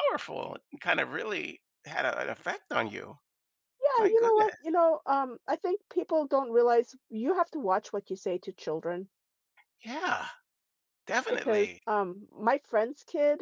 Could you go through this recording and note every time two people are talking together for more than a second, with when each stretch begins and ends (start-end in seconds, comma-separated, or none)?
none